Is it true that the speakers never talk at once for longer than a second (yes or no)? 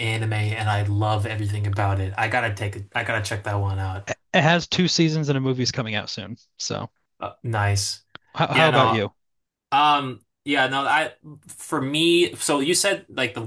yes